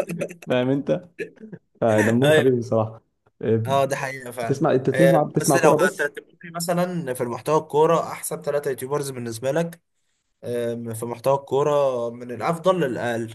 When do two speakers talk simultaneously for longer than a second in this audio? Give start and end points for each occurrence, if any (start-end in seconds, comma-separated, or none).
4.4-6.1